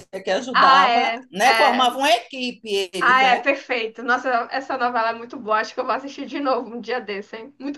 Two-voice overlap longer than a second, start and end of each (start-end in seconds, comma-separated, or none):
0.5-1.9